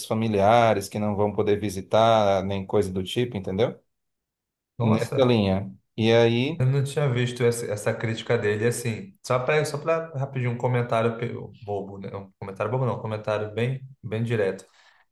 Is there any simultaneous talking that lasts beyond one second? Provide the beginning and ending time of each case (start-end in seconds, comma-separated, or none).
none